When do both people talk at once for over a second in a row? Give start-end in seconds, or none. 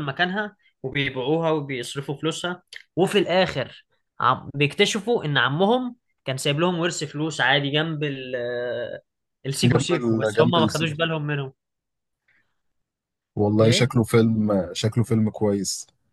9.7-11.1